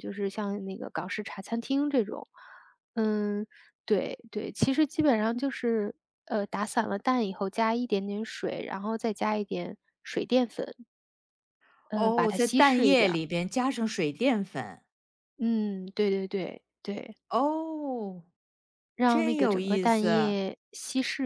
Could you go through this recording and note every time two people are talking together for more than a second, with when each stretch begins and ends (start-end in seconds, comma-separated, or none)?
11.9-13.2, 19.1-20.4